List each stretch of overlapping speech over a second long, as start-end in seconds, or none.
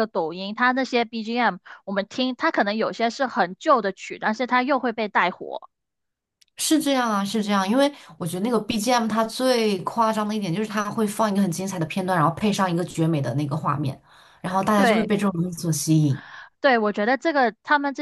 none